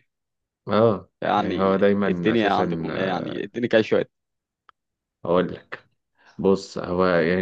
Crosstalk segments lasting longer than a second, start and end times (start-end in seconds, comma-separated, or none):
1.2-2.6